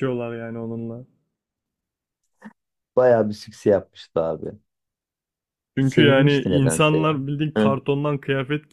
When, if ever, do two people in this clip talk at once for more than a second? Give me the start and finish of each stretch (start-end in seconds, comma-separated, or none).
5.8-7.2